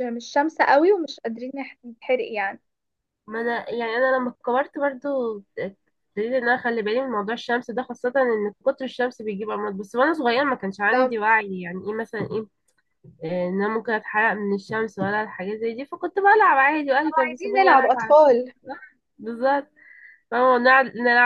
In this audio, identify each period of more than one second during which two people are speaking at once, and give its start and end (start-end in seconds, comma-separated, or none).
17.1-18.4